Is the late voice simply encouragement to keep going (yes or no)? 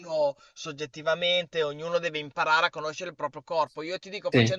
yes